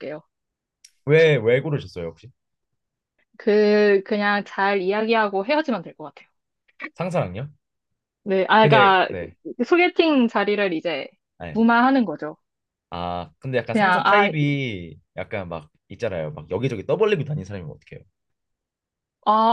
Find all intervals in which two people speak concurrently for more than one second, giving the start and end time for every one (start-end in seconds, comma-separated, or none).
none